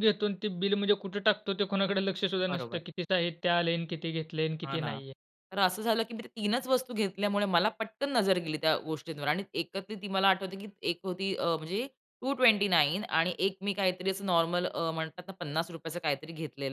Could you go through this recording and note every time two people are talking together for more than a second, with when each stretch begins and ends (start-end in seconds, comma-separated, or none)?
none